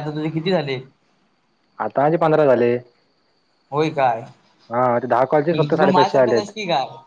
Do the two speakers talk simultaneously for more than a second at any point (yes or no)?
yes